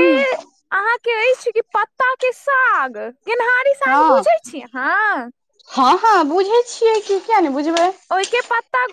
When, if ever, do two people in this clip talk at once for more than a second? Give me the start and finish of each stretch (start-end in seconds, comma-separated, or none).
none